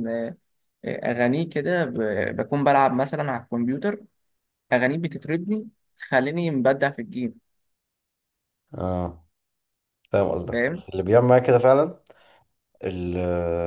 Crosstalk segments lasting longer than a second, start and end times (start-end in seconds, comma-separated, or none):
none